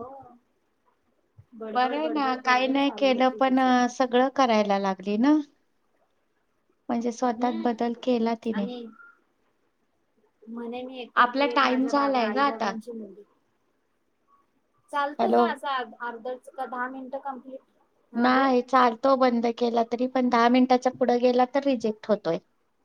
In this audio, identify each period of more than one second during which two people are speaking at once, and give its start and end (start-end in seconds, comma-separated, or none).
1.7-3.6, 11.2-12.7